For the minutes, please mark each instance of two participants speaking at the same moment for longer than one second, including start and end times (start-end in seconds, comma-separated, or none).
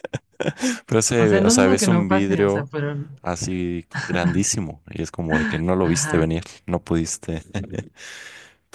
1.2-2.7